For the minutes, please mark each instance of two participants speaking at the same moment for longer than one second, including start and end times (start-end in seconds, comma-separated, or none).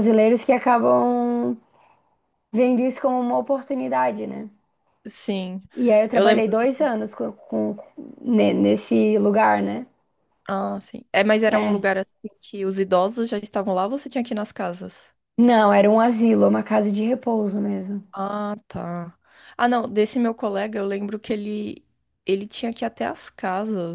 none